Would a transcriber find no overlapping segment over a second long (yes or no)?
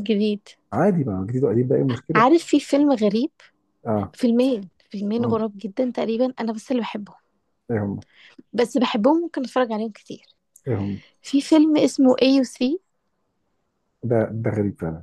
yes